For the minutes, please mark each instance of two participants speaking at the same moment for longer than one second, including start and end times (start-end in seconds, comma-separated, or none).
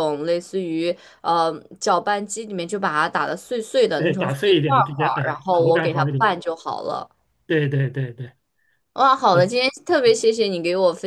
4.0-6.3